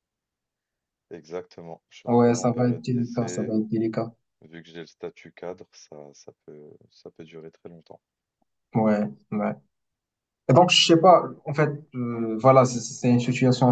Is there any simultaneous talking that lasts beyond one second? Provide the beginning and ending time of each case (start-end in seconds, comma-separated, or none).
2.1-3.5